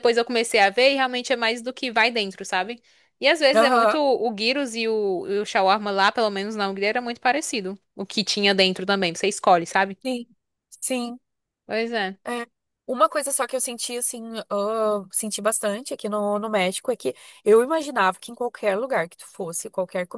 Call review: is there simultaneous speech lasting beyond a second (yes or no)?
no